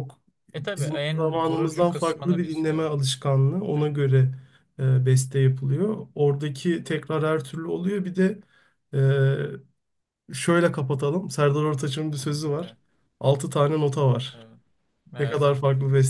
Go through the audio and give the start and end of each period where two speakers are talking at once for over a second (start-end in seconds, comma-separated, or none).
0.6-2.9